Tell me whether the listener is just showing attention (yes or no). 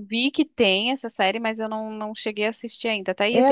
no